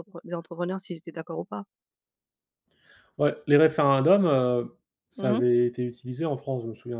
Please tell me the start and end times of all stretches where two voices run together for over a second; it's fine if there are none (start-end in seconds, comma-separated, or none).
none